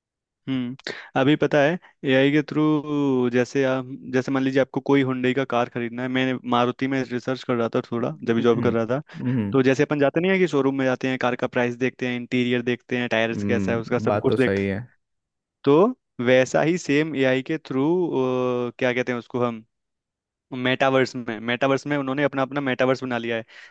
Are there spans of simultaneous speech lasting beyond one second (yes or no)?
yes